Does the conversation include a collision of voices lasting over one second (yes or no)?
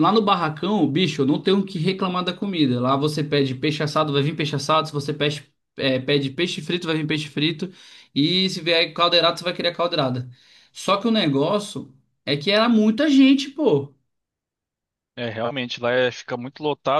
no